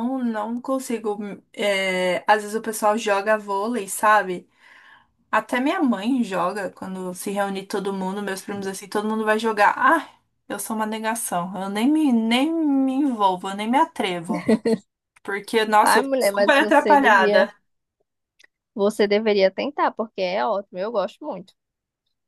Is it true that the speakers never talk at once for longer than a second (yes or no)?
no